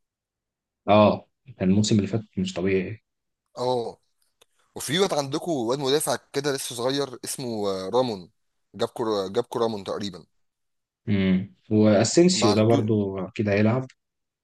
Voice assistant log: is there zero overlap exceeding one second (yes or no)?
yes